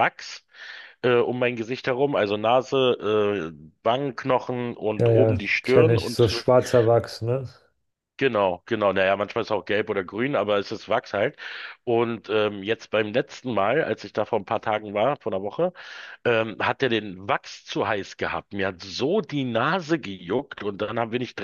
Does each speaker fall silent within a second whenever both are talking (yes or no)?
no